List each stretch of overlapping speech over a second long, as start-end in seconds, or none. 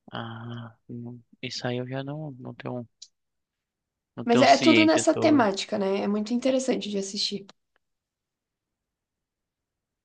4.2-5.4